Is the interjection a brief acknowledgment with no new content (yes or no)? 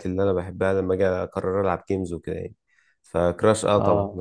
yes